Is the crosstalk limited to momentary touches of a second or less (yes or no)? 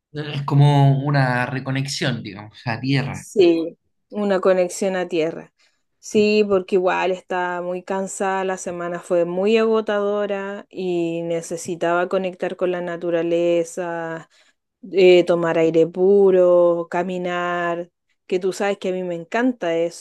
yes